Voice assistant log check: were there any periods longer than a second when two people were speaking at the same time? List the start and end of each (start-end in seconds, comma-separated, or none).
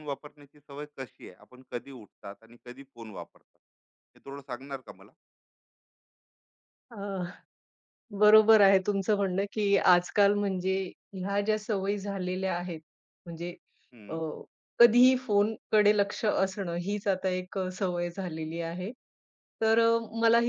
none